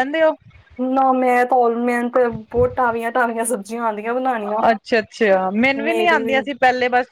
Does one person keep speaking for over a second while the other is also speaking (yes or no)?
no